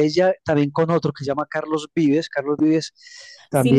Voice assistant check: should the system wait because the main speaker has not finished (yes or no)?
no